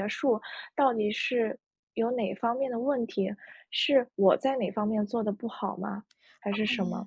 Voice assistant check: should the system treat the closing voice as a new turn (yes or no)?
yes